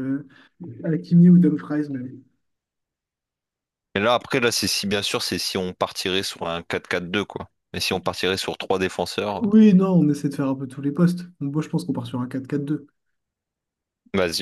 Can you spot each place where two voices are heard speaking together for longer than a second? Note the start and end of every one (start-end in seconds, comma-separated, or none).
none